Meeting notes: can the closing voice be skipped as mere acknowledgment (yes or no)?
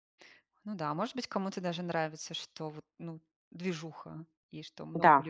no